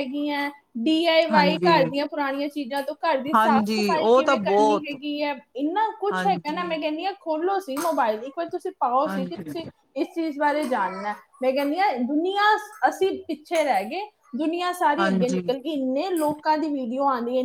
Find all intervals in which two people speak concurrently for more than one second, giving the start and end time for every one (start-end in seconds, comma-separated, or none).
3.3-5.0